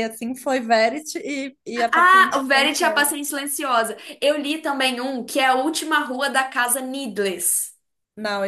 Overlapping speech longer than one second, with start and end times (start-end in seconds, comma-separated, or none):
1.8-3.1